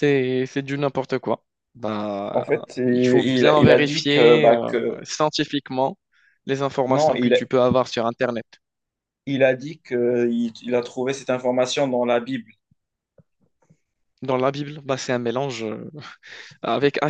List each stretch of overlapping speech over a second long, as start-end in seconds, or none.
3.2-5.0